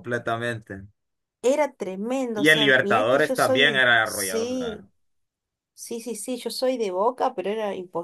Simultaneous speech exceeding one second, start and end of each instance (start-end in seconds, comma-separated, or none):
2.3-4.8